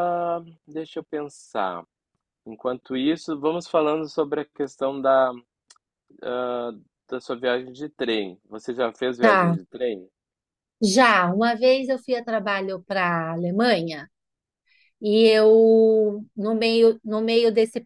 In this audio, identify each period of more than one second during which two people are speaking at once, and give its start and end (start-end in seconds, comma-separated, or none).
none